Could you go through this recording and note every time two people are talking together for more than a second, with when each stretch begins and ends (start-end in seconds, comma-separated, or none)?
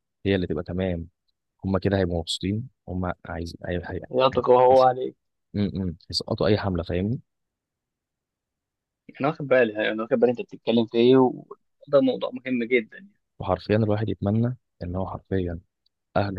none